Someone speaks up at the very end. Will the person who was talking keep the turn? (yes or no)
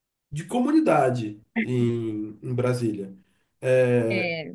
yes